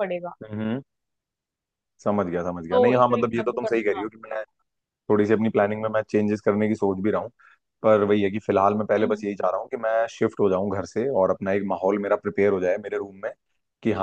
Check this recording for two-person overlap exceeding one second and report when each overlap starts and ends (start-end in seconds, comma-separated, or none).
2.7-4.0